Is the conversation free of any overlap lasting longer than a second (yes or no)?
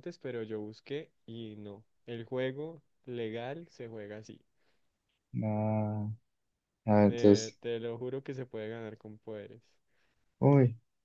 yes